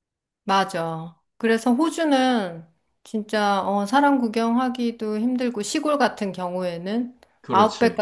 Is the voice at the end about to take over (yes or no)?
no